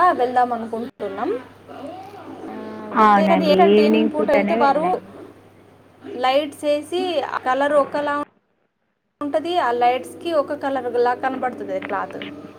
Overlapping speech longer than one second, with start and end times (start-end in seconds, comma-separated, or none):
3.1-4.8